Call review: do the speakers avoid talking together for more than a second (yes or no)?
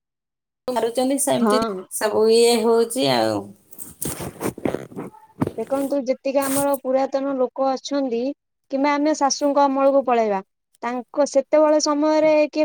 yes